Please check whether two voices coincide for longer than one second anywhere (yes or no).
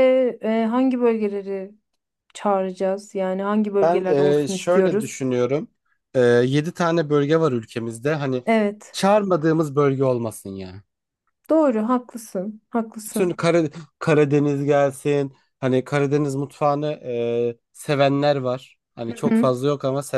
yes